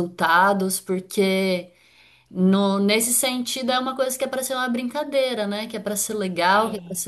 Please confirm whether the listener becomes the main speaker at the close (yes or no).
no